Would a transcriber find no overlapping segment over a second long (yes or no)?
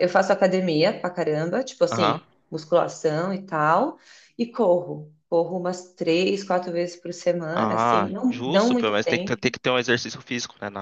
no